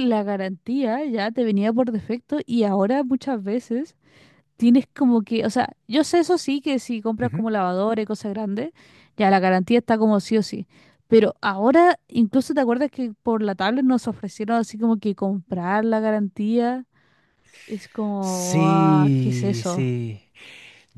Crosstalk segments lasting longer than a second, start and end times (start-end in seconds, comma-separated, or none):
18.2-19.9